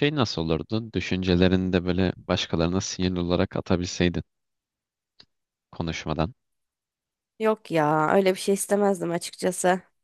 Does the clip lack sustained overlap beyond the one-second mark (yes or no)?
yes